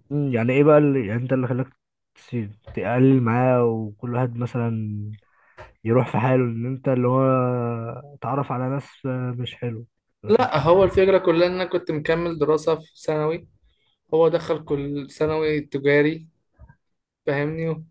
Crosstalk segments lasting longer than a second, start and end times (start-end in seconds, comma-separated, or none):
none